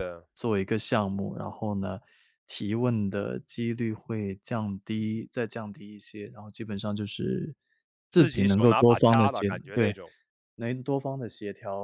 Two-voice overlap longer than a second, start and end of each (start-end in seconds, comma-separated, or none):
8.1-9.9